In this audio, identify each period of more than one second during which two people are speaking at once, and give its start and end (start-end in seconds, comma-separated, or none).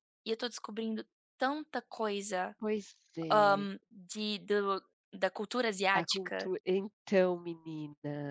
none